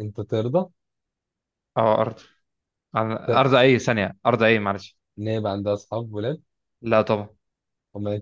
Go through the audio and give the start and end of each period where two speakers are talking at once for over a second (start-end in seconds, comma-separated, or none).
none